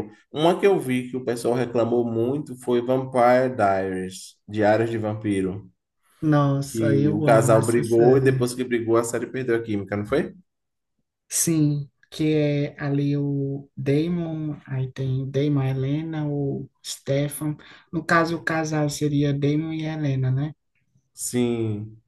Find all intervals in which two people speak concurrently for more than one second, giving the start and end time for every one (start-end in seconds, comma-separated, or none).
6.7-8.5